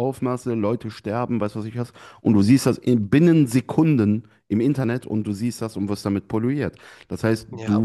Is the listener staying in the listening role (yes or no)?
yes